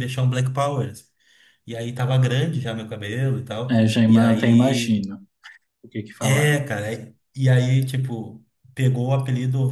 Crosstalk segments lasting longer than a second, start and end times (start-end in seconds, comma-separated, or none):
3.7-5.0